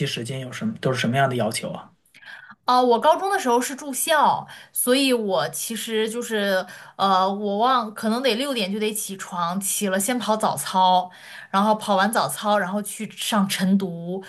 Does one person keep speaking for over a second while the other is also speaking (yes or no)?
no